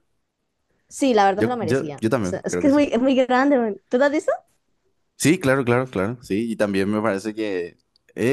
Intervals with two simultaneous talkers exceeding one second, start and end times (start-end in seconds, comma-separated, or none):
1.4-2.8